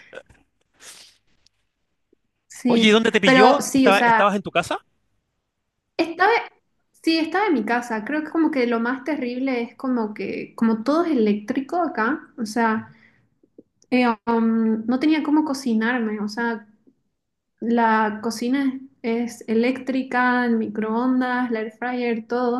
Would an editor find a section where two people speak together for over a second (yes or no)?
yes